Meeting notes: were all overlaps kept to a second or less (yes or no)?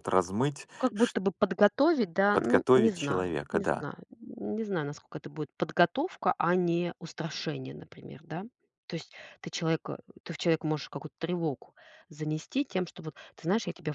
no